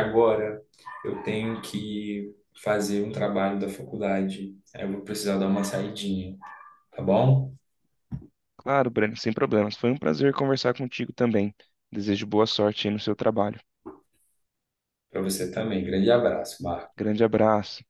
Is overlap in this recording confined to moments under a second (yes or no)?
yes